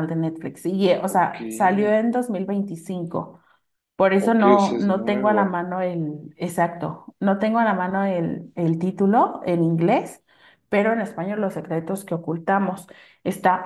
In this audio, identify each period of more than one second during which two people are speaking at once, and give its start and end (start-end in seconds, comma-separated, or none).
4.2-5.6